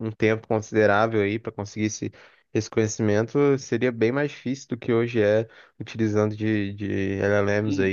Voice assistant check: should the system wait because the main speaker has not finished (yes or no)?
no